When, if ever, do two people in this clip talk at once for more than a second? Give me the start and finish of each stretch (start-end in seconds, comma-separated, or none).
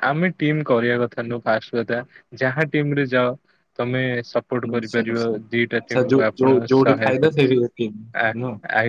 4.7-7.4